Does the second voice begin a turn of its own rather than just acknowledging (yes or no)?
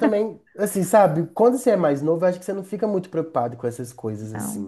no